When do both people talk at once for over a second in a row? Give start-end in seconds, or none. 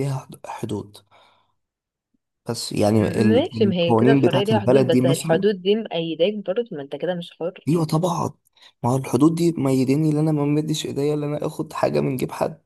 3.0-5.5